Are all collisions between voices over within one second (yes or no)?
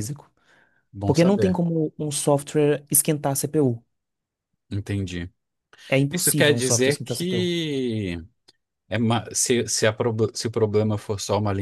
no